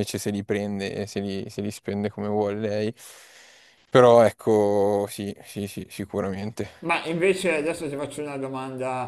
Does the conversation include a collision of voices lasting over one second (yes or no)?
no